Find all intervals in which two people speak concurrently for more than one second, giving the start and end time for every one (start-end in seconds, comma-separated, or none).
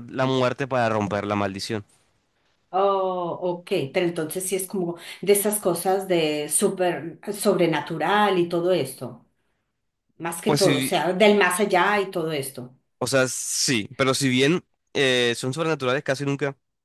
none